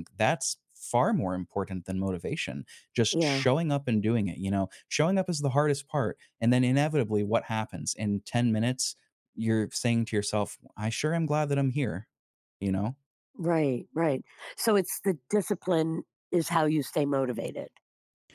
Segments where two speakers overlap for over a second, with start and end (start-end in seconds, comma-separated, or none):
none